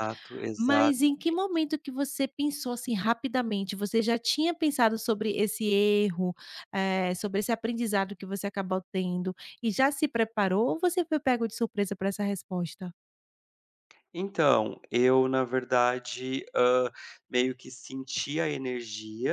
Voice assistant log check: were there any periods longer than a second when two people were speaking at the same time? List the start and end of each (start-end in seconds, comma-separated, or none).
none